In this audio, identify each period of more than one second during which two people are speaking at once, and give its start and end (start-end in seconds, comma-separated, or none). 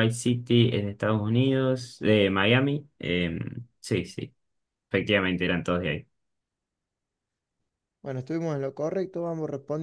none